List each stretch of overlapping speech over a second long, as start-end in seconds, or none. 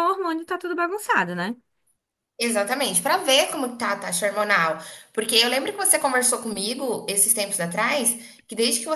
none